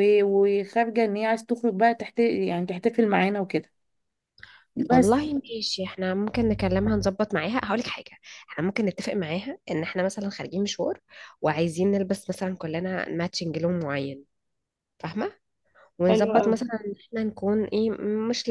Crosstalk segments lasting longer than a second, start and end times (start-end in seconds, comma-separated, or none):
none